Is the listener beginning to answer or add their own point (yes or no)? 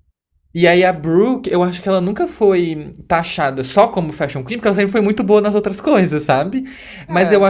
no